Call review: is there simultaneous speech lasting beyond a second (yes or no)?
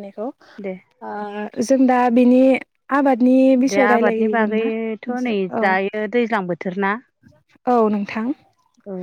yes